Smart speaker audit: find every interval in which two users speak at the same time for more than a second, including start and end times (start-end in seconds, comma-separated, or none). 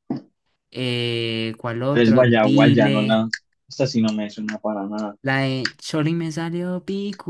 1.9-3.2